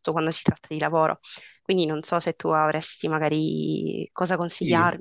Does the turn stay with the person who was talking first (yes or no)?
no